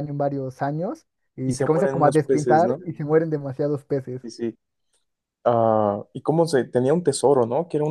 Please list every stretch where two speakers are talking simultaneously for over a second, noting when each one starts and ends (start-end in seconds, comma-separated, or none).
1.4-2.8